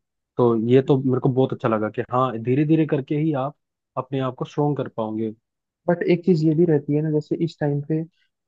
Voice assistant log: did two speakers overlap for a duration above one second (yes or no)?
no